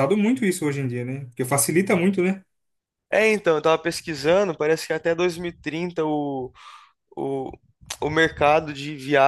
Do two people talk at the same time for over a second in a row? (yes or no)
no